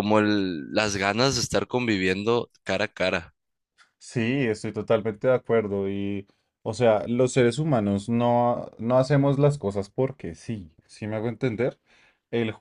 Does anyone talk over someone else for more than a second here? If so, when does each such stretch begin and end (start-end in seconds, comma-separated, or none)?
none